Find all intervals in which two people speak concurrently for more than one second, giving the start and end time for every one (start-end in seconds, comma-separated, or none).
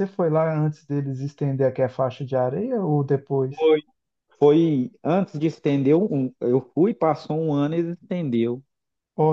none